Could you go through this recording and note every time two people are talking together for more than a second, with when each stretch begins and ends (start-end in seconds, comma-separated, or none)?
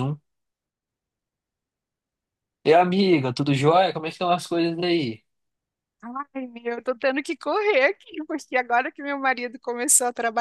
none